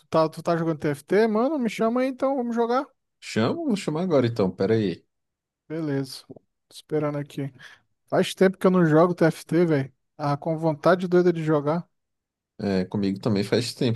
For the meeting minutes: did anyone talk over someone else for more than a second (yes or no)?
no